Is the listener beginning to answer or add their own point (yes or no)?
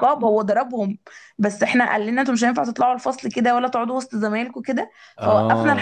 no